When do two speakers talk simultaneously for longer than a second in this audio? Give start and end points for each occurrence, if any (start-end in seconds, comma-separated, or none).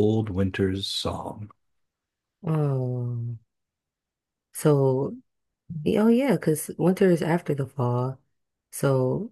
none